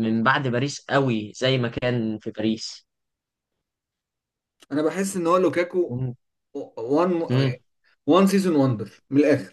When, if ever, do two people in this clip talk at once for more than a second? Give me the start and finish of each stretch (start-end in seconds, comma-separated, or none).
none